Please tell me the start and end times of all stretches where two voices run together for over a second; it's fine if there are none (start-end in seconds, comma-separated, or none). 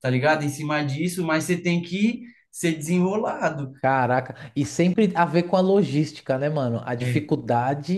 none